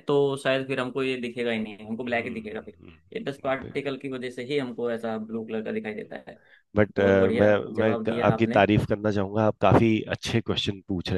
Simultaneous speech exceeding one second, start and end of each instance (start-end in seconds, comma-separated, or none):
7.0-8.6